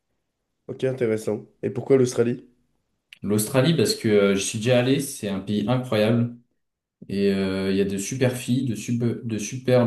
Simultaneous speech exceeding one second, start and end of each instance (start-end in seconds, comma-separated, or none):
none